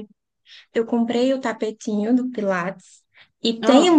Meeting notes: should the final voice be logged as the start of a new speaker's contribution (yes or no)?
no